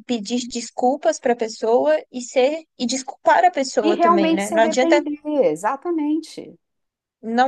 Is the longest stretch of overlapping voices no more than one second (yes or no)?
no